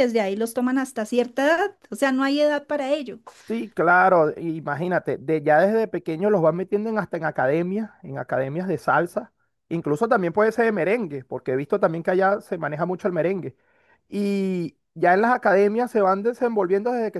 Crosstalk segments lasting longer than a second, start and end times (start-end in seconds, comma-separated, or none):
none